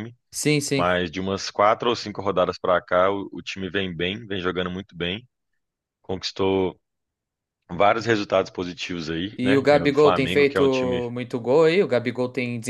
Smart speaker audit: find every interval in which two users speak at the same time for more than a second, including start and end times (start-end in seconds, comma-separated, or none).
9.4-11.0